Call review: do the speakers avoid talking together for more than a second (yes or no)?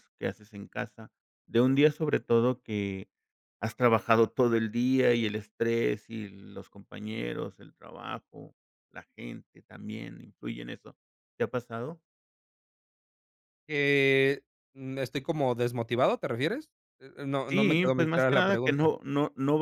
no